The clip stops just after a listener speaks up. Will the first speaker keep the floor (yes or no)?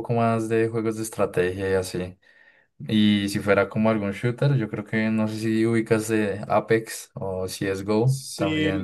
no